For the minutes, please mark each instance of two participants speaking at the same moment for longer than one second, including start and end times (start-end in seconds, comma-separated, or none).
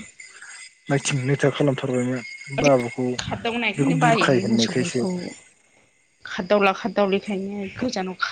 3.7-5.0